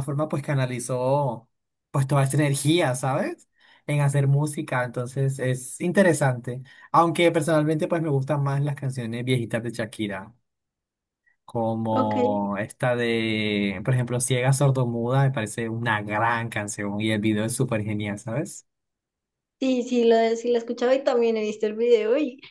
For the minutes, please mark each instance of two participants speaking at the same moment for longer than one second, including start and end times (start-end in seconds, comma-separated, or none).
none